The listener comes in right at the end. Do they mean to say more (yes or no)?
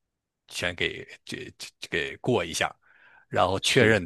no